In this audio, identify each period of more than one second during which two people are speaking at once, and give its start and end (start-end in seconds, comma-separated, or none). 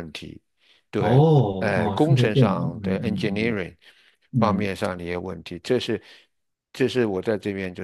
1.0-3.6